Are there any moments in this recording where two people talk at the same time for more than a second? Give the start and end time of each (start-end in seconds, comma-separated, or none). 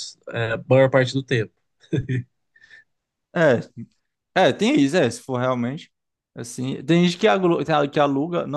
none